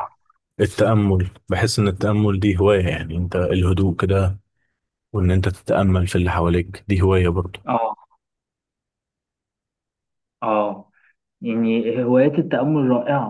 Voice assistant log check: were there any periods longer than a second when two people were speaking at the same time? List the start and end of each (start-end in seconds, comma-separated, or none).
none